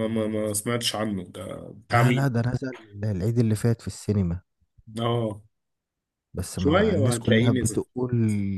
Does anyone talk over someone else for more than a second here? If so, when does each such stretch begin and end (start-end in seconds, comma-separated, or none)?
6.5-7.8